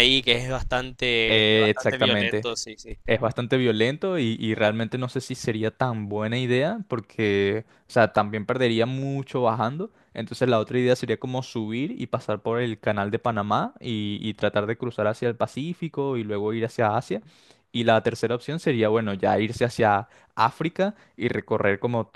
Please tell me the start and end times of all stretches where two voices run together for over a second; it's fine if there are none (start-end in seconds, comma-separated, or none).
1.3-2.5